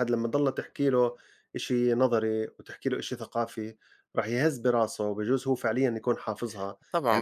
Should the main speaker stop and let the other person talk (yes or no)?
yes